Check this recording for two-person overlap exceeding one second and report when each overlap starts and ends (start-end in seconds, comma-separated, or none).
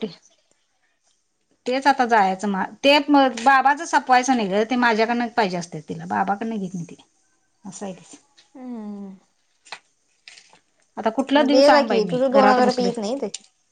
11.5-12.9